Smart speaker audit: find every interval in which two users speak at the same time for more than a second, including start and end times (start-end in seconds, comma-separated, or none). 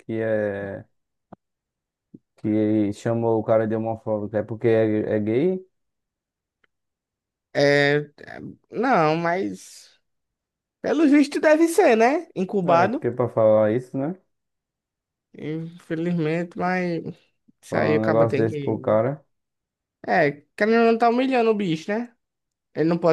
17.7-19.0